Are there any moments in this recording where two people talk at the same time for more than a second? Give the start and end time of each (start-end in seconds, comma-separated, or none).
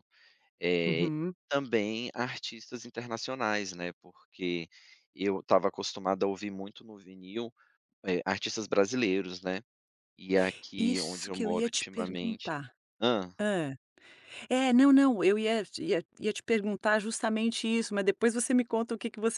10.8-12.5